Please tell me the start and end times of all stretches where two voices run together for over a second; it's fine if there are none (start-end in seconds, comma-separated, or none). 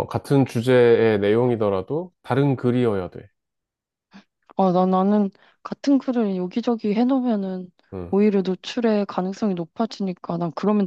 none